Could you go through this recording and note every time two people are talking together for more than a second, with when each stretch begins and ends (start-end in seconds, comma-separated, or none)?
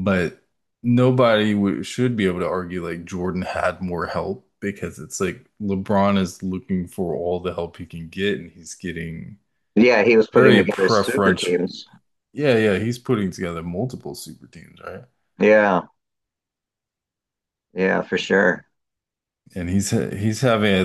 10.3-11.6